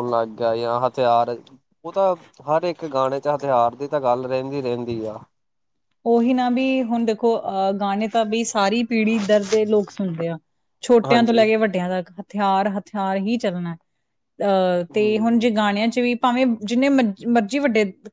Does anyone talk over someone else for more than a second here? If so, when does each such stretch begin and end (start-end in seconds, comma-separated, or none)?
none